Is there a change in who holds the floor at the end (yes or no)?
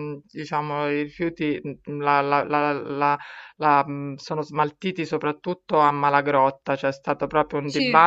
no